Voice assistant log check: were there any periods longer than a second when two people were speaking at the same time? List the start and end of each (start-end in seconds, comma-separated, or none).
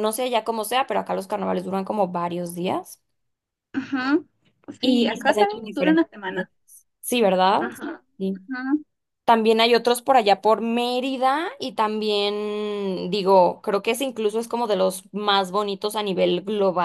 4.8-6.5